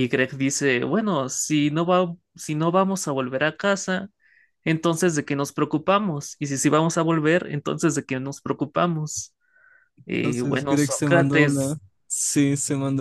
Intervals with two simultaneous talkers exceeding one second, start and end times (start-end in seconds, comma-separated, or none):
10.1-11.8